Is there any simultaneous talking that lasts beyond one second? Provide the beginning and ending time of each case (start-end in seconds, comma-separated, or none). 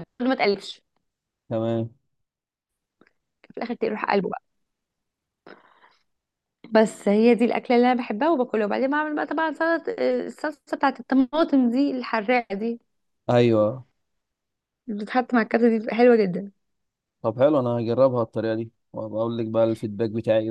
none